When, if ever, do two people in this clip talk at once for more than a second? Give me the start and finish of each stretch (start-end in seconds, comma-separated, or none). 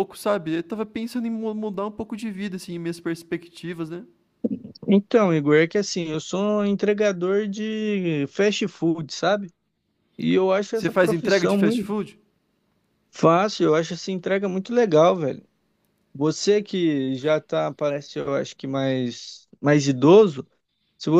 10.7-11.9